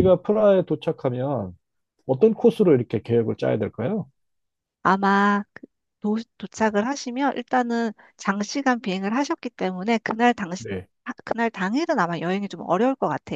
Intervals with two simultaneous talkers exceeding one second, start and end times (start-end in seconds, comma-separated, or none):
none